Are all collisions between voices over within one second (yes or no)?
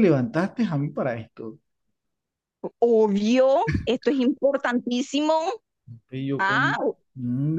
yes